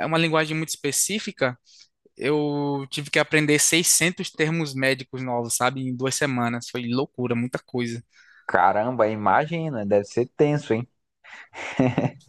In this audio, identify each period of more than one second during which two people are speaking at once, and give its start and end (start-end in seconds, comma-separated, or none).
none